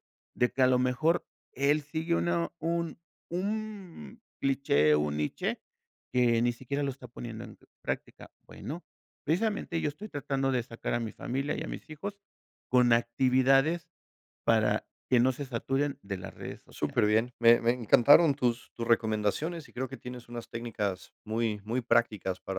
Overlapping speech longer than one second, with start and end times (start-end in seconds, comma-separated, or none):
none